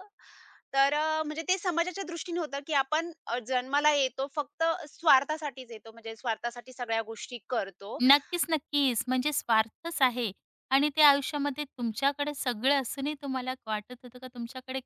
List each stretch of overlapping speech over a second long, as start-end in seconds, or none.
none